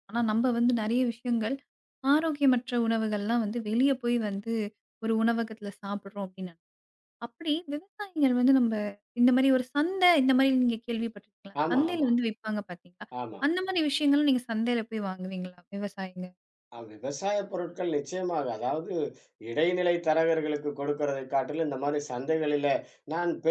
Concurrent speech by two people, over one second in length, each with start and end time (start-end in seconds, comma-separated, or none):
none